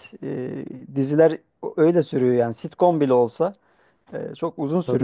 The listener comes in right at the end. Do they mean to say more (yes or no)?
no